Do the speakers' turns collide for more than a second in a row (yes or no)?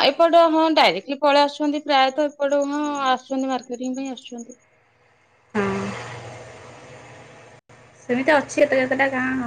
no